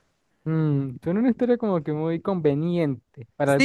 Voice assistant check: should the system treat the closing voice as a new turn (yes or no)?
yes